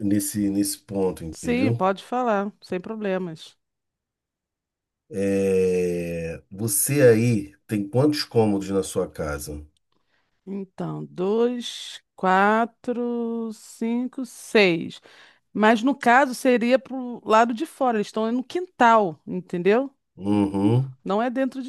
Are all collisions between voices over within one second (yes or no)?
yes